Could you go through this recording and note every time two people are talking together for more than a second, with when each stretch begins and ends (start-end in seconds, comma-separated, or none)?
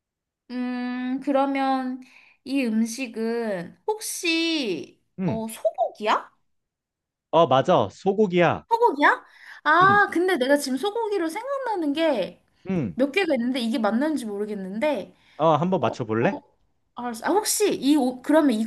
none